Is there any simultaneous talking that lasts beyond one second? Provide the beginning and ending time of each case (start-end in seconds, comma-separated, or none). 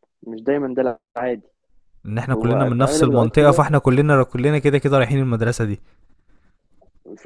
2.3-3.6